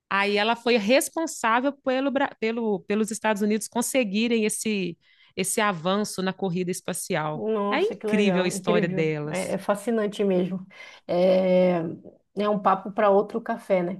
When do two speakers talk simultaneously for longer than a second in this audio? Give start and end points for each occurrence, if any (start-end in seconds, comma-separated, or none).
7.3-9.6